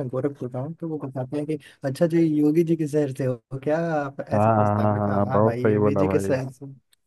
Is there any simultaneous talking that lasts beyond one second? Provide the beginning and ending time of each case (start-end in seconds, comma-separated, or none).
4.3-6.4